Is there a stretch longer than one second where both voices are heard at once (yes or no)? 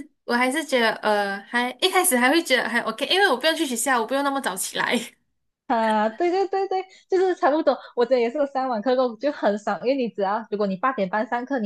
no